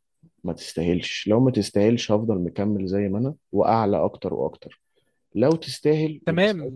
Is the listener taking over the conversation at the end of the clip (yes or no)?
yes